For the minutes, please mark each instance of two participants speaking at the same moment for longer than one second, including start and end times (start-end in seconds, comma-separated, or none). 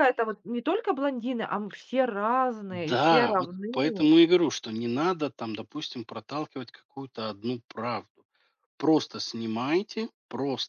2.7-4.1